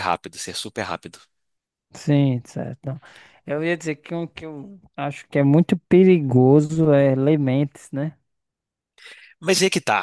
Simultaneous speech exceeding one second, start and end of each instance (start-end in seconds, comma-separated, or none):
none